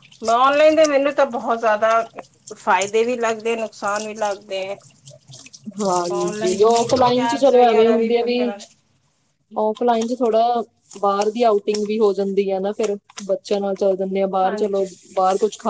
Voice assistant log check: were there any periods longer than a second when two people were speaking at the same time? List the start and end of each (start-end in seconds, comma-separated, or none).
6.0-8.5